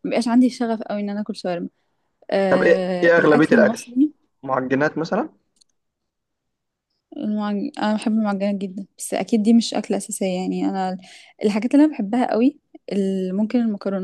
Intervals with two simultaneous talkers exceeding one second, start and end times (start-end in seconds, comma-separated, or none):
2.5-3.9